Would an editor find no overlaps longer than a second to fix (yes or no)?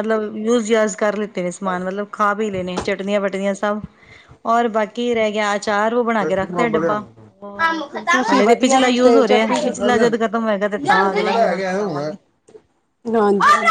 no